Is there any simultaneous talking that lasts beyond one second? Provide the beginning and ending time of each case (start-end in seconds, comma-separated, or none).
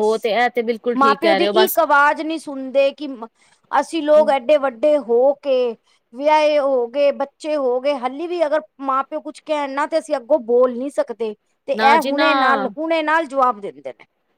none